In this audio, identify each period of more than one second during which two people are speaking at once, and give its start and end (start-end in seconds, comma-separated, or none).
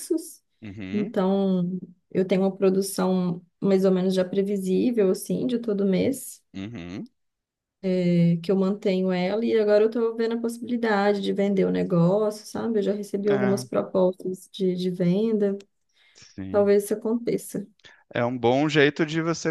none